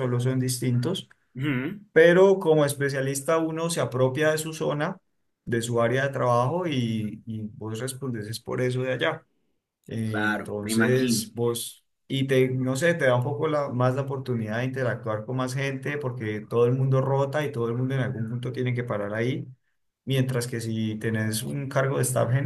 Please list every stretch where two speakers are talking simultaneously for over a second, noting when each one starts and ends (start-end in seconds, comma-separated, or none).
10.0-11.3